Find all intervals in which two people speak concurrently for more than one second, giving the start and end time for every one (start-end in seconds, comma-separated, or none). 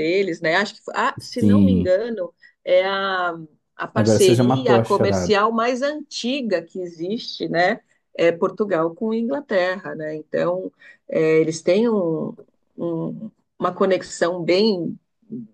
3.9-5.4